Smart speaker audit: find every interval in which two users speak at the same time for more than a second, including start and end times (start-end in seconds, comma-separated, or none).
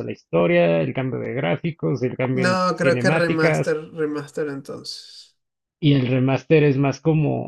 2.3-3.8